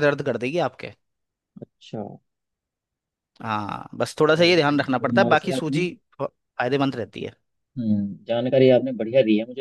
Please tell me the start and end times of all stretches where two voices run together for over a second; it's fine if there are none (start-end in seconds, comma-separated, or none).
4.3-5.8